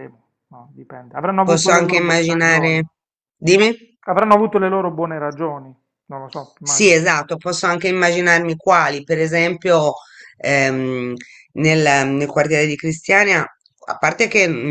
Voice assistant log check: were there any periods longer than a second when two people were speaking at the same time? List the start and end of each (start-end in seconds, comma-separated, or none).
1.4-2.8